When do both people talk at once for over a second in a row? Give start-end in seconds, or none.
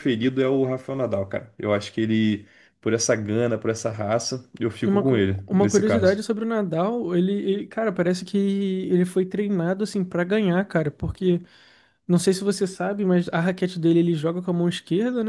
4.9-6.2